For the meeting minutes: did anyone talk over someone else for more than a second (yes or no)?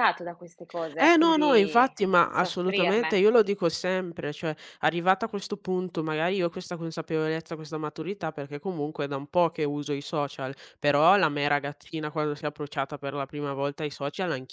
yes